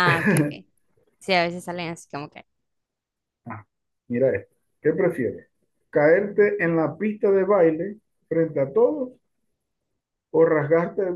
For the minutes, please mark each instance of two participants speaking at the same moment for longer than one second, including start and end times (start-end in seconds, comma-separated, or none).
none